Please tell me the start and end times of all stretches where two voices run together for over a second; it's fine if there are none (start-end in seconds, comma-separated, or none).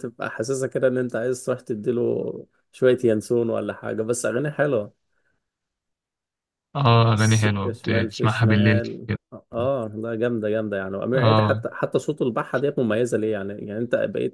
7.1-9.1